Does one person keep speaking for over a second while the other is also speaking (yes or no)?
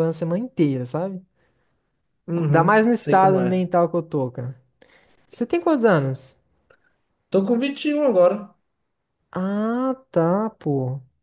yes